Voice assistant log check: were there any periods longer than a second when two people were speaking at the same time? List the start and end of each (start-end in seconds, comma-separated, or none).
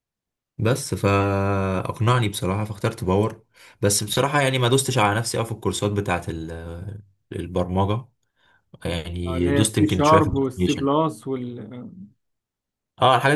9.3-10.9